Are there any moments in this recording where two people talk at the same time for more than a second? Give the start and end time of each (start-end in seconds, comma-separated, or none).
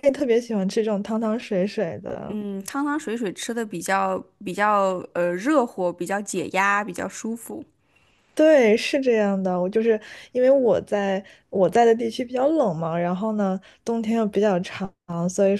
none